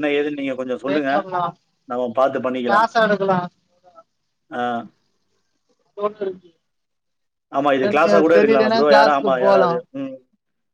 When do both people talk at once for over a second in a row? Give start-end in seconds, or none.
7.8-9.7